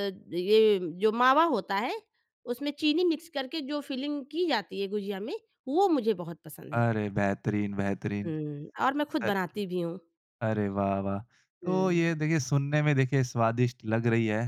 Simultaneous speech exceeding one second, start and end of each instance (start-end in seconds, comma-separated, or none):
none